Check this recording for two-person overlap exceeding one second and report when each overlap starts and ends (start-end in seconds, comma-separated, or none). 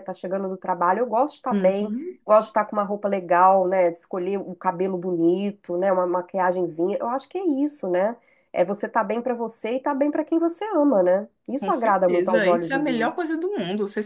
11.5-13.3